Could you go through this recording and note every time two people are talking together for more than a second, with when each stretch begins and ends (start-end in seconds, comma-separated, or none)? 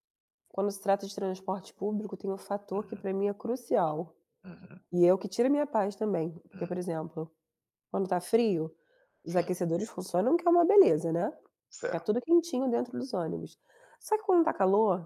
none